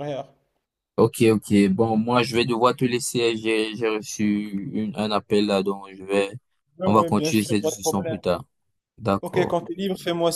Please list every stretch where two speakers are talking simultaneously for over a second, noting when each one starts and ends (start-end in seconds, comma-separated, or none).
6.8-8.2